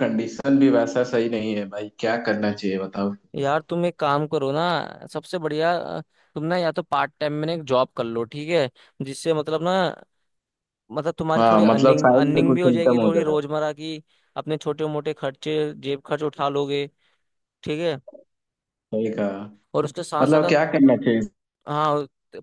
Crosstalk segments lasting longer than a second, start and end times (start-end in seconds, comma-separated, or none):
11.4-13.4